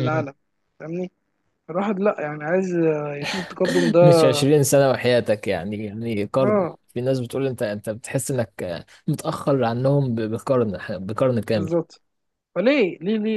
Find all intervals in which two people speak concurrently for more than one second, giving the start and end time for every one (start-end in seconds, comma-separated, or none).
none